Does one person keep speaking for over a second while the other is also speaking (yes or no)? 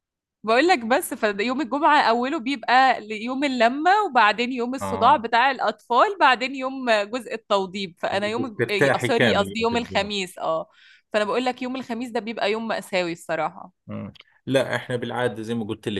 yes